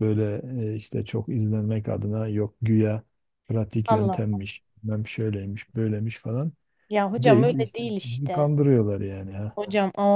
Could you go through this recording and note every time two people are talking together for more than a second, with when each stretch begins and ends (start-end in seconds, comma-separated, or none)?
7.2-8.5